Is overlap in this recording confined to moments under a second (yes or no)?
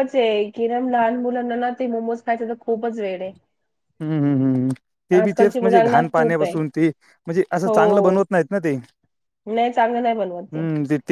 no